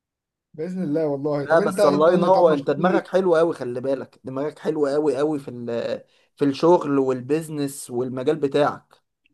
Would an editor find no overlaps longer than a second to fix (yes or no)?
no